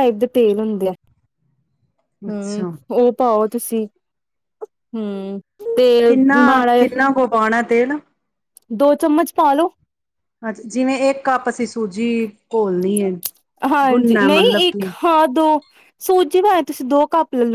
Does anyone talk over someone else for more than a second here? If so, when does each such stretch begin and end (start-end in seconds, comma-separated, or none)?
none